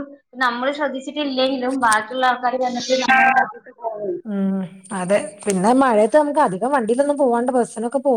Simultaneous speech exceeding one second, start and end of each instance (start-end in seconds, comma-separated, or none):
none